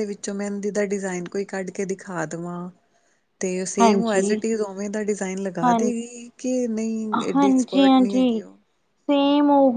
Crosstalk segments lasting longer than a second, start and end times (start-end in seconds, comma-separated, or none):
7.2-8.4